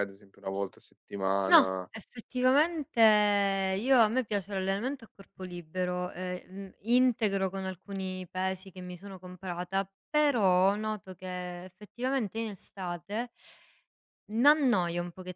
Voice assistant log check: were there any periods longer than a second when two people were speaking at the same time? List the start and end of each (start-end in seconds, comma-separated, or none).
none